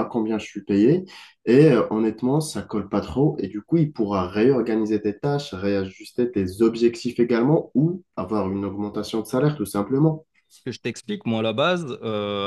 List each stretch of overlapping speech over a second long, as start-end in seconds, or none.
none